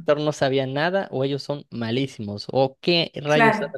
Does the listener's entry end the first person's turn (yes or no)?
no